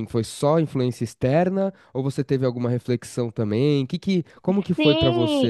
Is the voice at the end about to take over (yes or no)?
yes